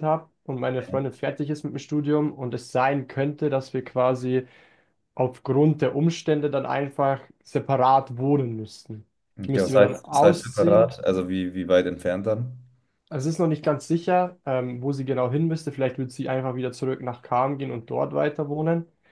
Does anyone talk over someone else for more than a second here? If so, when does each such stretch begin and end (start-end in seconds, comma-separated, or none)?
9.4-10.9